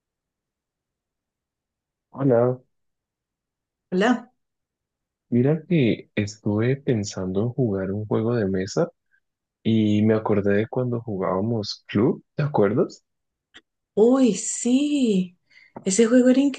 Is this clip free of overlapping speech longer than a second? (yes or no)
yes